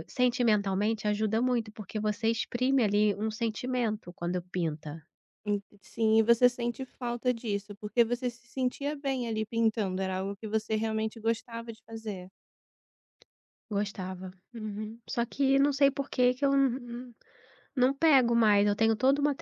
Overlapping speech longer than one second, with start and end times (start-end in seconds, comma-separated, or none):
none